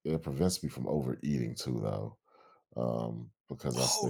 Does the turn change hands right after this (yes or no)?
yes